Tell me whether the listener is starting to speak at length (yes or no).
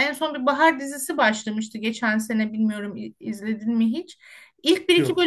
no